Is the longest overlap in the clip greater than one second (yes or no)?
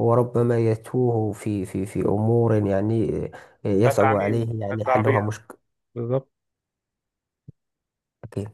yes